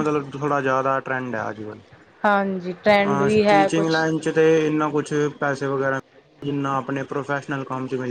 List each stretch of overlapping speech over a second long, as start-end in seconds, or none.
none